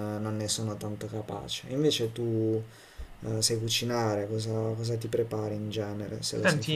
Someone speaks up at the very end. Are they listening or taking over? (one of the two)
taking over